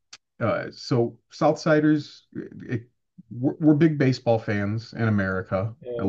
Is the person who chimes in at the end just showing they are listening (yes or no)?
no